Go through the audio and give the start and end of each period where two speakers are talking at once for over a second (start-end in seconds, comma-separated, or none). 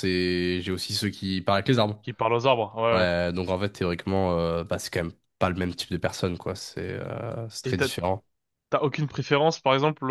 none